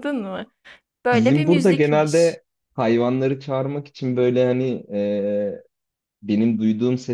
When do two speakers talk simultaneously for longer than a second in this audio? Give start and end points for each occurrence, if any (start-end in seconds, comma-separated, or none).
1.1-2.4